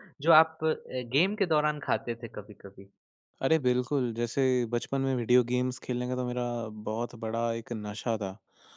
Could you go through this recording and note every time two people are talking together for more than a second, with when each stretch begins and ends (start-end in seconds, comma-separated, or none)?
none